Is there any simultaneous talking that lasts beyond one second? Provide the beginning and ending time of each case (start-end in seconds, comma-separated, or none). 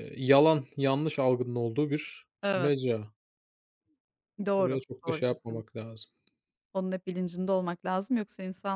4.6-5.8